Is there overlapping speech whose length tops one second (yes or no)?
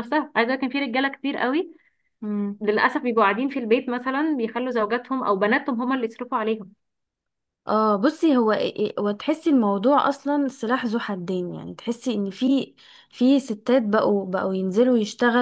no